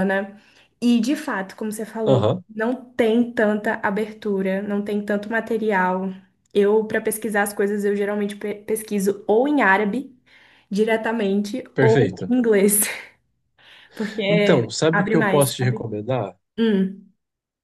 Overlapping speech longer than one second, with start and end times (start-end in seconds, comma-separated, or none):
14.3-15.8